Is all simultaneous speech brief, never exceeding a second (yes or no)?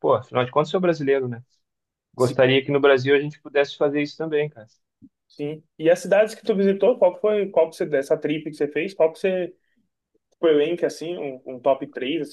yes